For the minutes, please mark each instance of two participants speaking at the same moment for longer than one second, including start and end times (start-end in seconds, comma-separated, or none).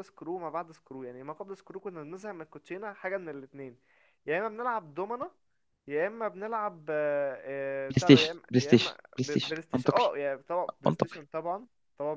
7.9-10.1